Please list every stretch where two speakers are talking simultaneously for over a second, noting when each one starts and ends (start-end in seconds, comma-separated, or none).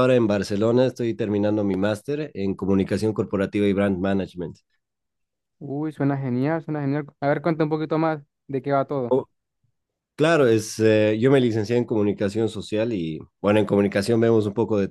none